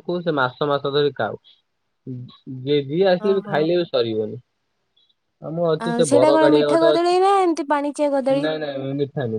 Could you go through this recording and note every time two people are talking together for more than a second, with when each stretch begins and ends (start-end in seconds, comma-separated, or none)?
5.8-8.4